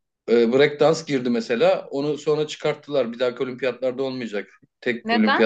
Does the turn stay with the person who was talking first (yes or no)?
yes